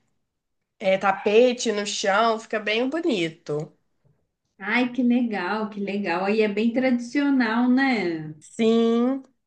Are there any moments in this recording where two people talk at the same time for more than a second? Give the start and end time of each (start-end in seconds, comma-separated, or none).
none